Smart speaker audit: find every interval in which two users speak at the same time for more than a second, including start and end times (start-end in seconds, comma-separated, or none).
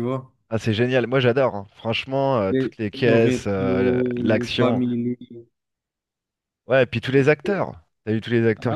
2.5-4.8